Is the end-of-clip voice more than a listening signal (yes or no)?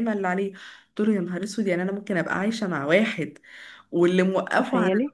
no